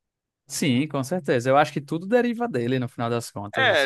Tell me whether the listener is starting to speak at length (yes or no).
yes